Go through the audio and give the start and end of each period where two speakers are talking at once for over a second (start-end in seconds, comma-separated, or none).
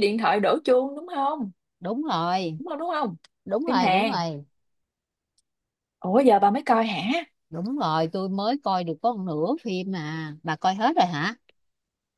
none